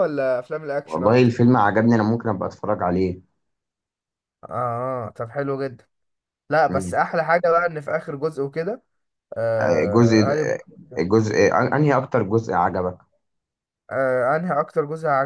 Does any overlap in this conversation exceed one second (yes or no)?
no